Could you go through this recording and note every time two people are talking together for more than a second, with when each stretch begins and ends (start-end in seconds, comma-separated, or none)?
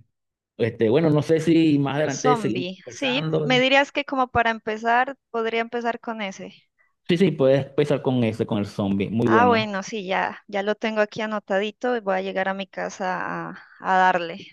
2.1-3.6